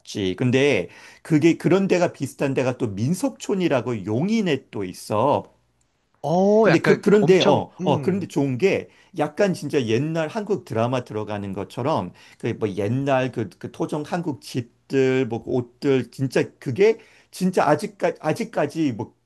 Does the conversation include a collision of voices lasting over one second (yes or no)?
yes